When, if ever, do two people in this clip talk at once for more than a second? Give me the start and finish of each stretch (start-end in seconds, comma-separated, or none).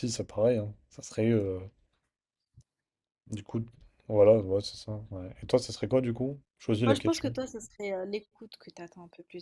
none